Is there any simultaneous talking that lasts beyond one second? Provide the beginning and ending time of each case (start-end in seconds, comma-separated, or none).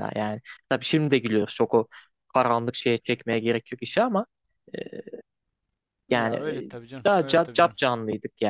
6.1-7.8